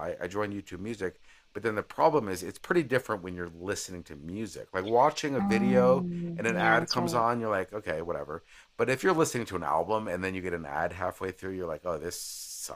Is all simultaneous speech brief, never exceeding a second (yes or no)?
no